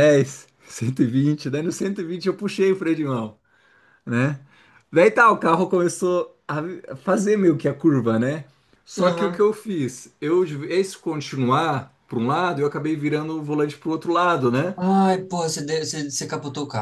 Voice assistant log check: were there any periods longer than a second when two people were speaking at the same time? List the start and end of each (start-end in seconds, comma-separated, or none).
none